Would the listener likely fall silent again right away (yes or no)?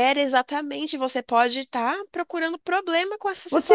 no